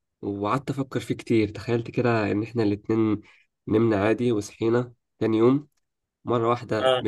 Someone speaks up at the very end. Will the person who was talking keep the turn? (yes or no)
yes